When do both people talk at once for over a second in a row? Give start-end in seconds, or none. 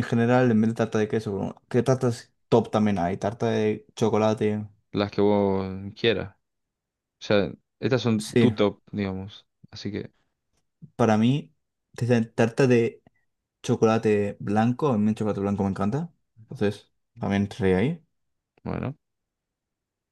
none